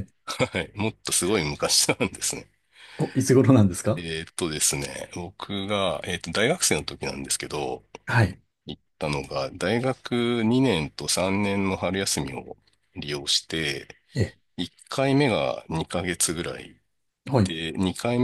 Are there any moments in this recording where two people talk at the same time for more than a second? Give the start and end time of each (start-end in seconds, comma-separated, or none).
none